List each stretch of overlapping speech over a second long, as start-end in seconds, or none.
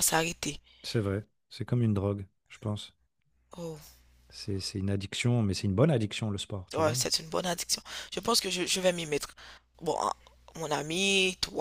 none